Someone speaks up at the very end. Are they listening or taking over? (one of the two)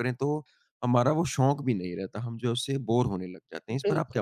taking over